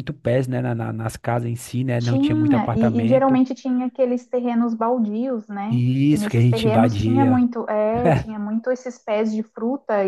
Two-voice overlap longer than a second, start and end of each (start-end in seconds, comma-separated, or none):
2.0-3.4, 5.7-7.4